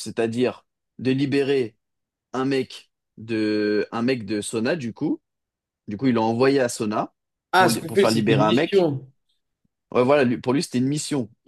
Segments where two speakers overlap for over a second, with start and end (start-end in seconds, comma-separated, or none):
7.6-8.9